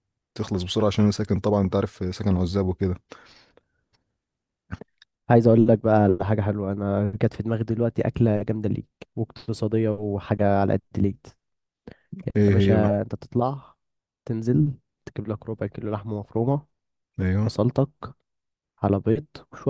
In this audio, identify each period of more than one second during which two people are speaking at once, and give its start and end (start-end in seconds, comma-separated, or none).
none